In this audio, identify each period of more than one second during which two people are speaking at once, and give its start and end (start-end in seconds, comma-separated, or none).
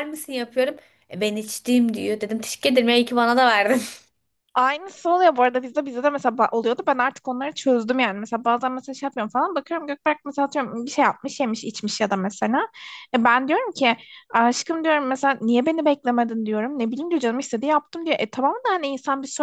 none